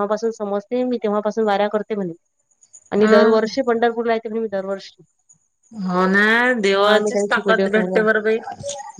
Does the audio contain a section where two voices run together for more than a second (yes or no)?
yes